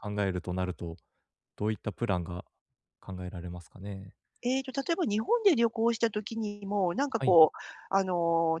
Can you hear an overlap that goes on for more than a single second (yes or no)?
no